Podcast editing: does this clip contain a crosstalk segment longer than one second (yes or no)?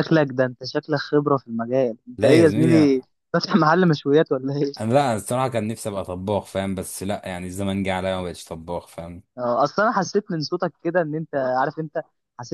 no